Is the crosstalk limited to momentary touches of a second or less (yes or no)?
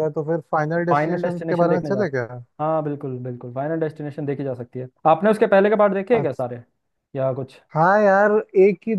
no